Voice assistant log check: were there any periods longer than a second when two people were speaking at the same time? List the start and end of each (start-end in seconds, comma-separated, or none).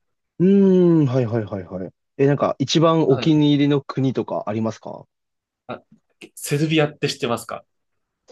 none